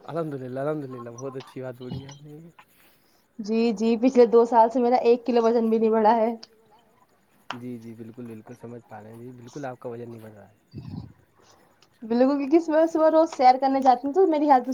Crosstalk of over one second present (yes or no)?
no